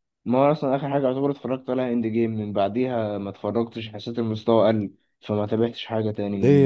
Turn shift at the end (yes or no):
yes